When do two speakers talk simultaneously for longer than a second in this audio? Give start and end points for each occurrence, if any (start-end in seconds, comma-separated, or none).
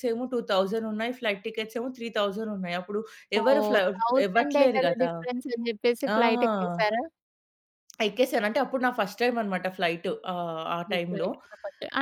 none